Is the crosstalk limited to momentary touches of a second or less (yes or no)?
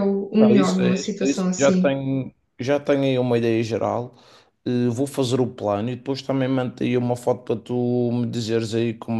no